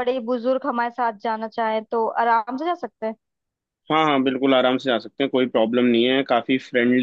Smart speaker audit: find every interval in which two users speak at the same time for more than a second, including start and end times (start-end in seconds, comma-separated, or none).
none